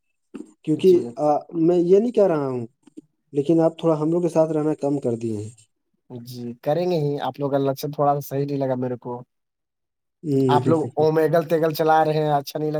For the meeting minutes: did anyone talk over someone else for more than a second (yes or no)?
no